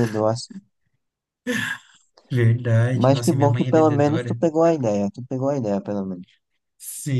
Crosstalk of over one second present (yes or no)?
yes